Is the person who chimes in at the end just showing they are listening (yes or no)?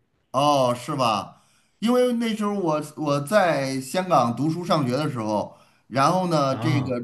yes